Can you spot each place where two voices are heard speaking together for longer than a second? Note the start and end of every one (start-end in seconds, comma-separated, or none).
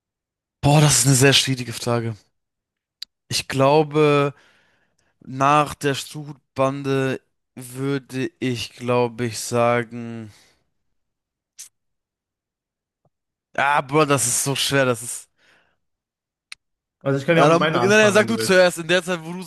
17.4-18.7